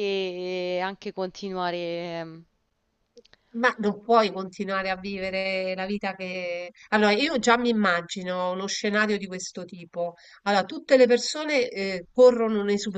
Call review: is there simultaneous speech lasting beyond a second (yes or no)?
no